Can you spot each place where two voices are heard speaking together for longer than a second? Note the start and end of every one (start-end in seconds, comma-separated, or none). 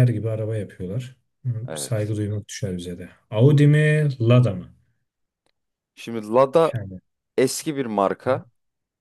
none